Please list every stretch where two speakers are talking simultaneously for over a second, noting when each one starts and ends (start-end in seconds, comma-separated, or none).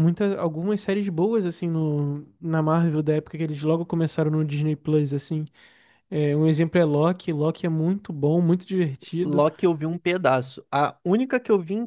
none